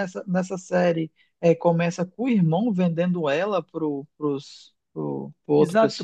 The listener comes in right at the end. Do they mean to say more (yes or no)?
yes